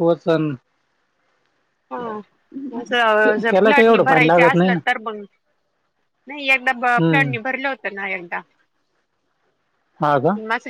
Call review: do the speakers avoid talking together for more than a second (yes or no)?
no